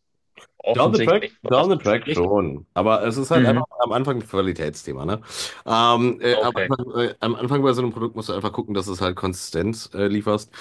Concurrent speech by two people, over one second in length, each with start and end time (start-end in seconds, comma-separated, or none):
0.7-2.3